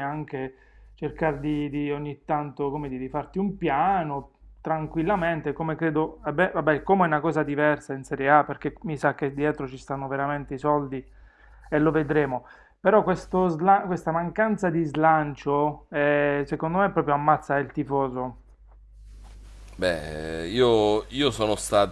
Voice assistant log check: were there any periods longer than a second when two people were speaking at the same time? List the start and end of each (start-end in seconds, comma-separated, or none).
none